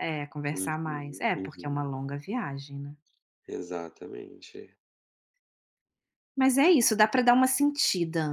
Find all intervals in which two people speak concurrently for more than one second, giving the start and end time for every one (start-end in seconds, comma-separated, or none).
0.5-2.0